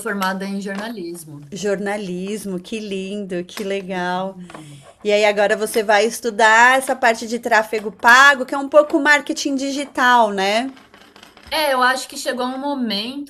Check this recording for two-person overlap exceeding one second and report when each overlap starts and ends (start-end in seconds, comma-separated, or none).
none